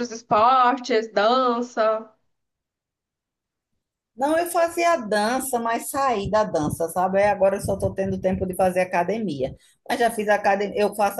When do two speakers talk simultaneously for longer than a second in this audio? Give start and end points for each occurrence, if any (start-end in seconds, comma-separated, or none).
none